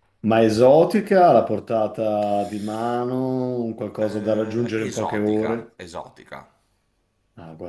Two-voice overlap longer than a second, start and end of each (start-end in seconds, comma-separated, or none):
4.1-5.8